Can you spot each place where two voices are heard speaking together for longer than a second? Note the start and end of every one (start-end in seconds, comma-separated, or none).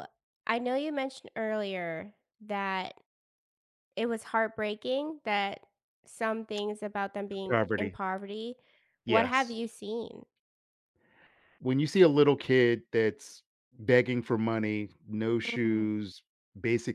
none